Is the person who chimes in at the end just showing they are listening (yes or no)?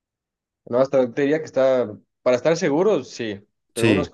yes